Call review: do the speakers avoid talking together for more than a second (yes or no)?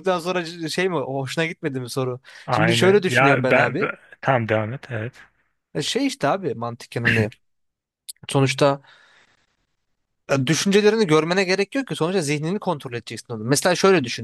no